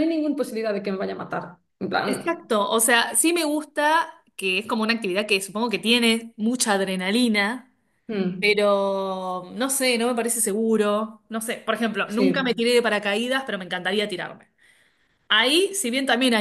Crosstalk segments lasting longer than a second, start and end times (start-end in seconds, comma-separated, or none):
none